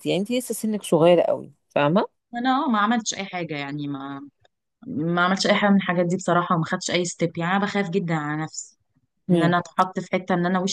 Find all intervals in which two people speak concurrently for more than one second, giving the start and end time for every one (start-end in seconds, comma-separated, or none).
none